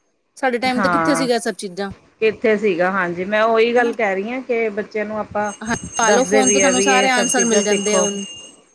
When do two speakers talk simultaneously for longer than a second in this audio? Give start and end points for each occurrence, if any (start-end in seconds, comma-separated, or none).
6.1-8.1